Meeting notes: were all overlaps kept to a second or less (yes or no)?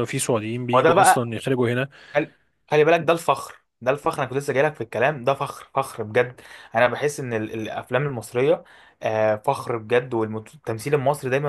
yes